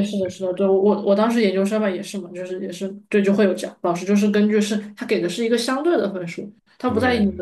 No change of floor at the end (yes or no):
yes